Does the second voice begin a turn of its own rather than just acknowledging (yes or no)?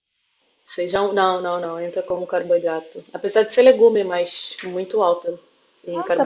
yes